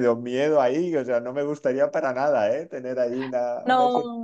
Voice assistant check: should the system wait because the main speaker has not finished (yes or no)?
no